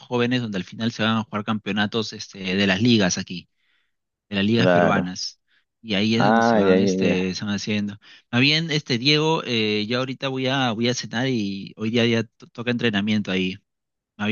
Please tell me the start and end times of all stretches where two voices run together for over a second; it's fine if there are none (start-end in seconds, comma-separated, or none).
6.2-7.4